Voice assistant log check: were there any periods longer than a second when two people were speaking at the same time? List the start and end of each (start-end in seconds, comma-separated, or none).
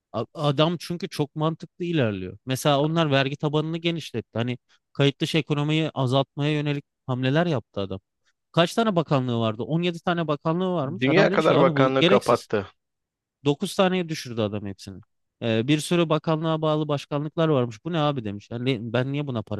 11.0-12.5